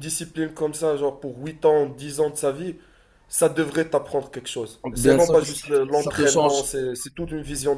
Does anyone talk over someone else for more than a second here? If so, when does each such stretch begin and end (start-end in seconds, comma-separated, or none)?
5.0-6.6